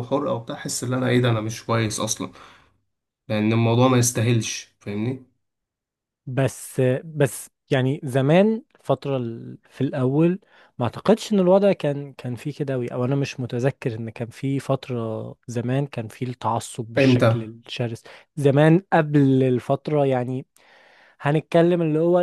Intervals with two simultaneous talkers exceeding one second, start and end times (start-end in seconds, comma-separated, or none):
none